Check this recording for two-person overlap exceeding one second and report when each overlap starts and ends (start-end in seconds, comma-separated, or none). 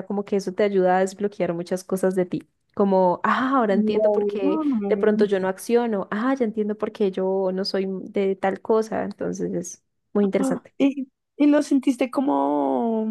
none